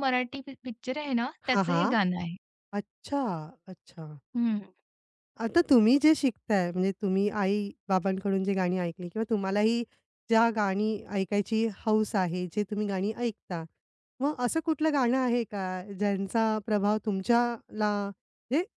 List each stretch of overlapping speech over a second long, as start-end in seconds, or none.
none